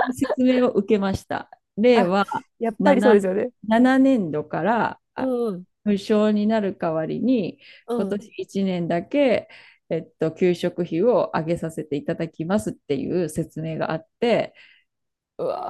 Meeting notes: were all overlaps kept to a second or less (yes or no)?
yes